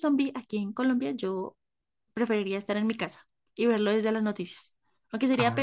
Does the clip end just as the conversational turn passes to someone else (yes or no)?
no